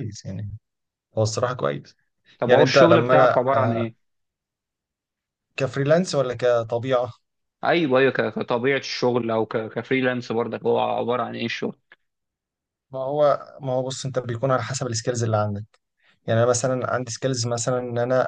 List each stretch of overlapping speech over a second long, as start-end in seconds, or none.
2.5-3.8